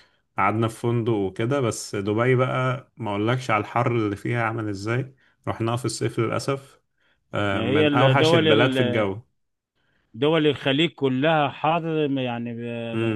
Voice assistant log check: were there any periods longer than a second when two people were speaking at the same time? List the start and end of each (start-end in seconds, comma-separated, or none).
7.5-9.1